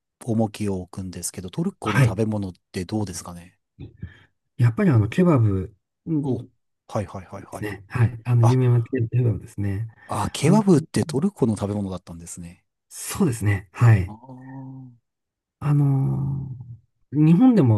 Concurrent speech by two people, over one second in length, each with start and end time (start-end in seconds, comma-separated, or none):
none